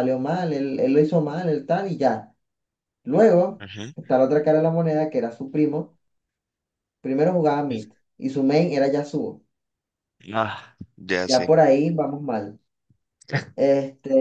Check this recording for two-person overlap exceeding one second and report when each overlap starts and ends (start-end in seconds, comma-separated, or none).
none